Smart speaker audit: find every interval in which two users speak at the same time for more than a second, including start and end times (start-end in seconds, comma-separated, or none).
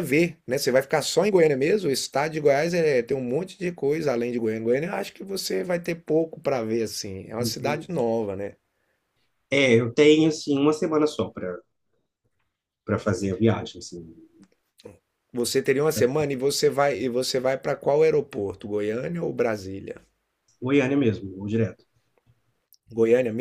none